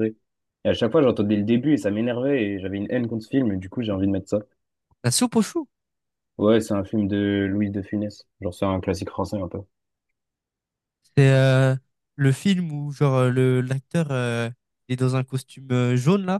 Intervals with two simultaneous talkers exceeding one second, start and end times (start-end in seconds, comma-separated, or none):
none